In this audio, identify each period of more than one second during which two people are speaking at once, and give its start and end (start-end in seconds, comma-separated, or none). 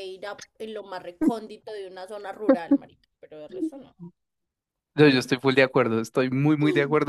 none